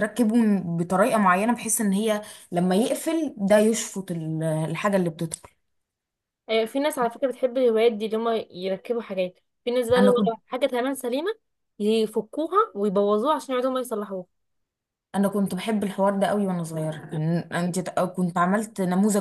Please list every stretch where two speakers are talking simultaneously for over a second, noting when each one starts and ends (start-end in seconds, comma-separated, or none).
none